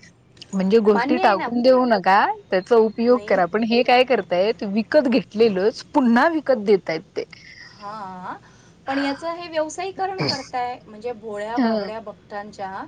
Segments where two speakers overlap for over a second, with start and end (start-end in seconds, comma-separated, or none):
none